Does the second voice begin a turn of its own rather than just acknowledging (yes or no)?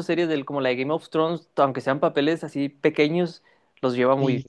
yes